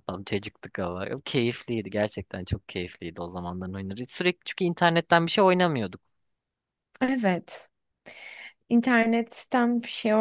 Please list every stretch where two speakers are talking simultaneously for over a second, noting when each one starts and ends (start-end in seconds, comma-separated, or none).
none